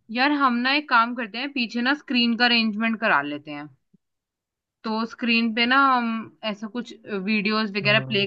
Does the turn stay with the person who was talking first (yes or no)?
yes